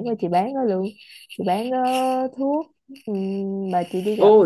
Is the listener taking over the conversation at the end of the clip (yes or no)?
yes